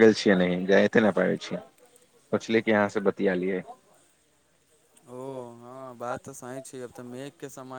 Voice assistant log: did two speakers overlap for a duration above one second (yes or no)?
no